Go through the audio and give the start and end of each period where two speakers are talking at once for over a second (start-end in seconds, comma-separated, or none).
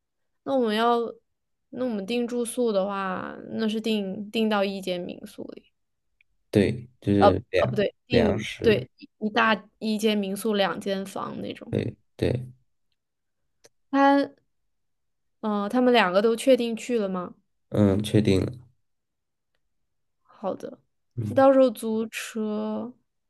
7.2-8.9